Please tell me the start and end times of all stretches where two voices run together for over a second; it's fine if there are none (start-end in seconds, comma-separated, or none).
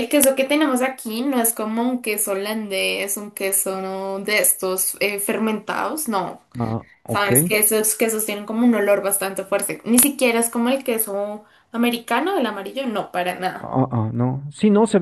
none